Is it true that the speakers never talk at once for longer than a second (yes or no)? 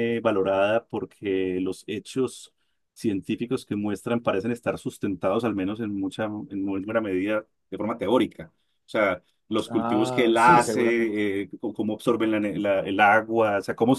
no